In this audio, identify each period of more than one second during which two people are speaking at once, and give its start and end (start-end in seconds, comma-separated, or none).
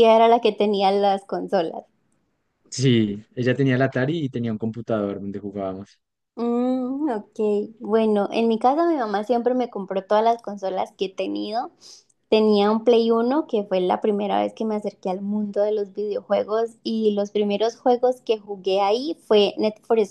none